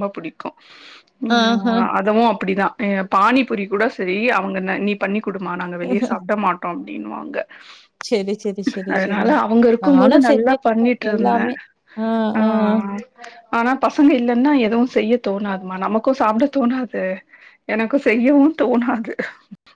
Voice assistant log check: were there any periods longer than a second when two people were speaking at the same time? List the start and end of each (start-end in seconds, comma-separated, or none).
9.8-11.5